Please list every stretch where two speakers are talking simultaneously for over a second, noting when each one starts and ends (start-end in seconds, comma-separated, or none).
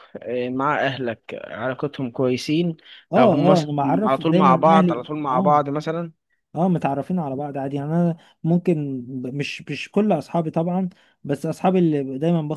3.2-5.6